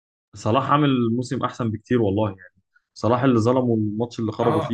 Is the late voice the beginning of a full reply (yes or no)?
yes